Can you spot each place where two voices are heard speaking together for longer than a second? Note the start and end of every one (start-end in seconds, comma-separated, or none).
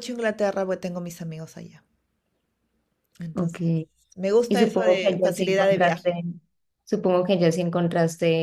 4.5-6.2